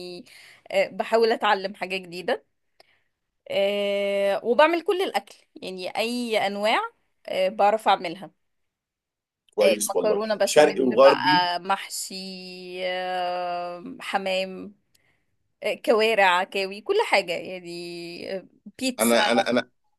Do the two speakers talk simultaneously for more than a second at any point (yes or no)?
yes